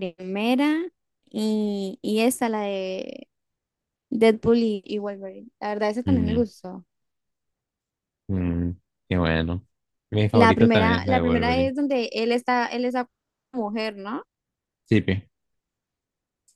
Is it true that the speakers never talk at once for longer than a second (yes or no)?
no